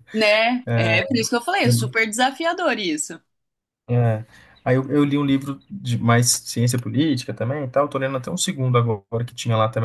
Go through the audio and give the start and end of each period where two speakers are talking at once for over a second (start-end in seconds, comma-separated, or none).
none